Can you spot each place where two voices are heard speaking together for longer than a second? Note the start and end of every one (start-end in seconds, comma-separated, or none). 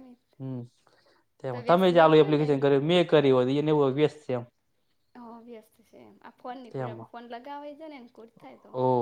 1.5-2.8